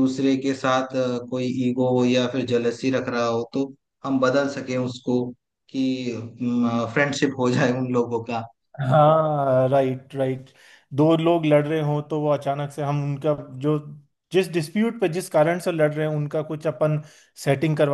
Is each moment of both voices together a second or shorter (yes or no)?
yes